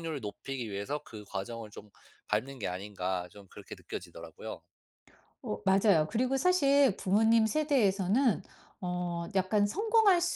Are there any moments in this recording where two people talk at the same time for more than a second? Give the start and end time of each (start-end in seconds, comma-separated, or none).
none